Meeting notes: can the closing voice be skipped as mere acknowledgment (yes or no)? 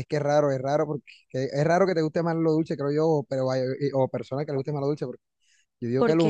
yes